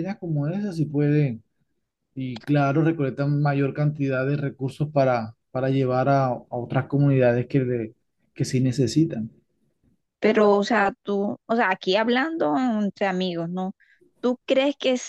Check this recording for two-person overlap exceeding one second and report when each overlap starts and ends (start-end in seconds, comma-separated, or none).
none